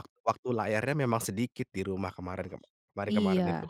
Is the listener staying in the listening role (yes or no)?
no